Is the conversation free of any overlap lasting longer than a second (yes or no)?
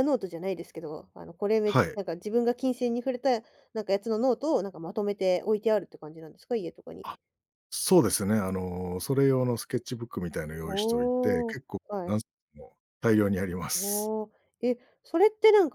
no